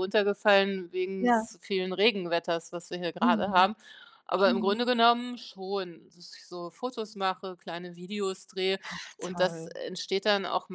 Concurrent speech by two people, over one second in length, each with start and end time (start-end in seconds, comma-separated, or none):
none